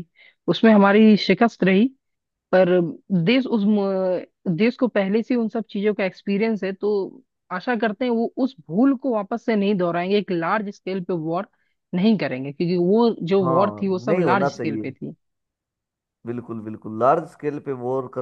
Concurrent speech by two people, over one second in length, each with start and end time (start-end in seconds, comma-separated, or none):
13.4-14.9